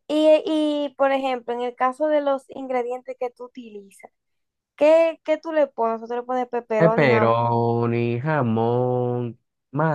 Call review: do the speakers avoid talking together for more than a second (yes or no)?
yes